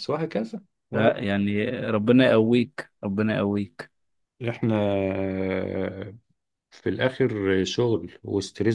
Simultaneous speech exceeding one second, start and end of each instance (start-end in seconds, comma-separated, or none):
none